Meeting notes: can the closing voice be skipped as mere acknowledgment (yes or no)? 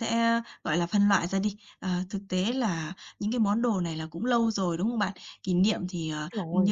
yes